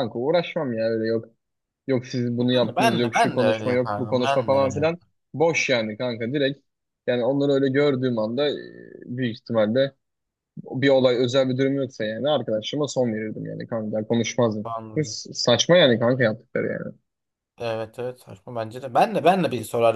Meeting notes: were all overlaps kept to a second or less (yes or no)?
no